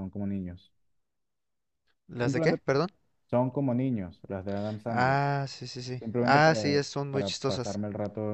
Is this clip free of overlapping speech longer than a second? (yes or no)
no